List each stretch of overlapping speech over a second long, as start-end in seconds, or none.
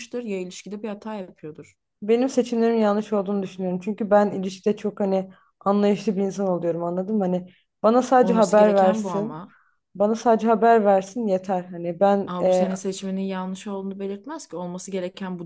8.2-9.4